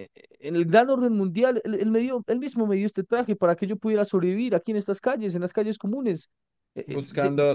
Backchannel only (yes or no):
no